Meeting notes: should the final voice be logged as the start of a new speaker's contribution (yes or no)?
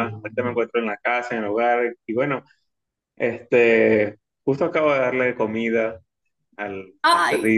yes